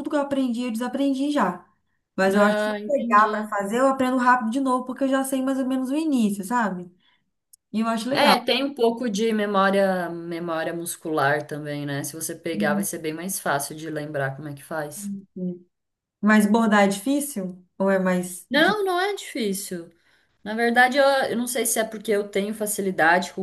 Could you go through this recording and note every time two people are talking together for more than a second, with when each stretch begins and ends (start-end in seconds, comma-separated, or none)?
2.3-3.5